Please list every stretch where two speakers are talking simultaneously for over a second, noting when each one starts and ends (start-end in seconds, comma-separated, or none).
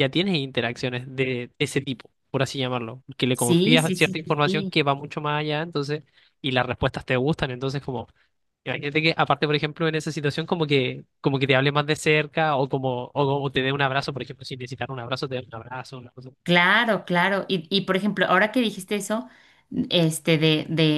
3.3-4.8